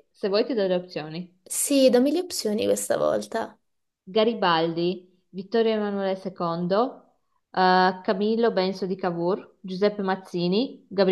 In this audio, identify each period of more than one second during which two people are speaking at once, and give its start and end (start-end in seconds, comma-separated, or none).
none